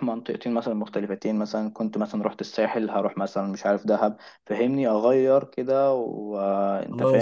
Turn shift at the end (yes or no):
yes